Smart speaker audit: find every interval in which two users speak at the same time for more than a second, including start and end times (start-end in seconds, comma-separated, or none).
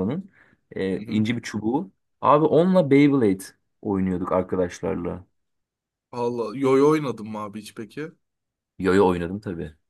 none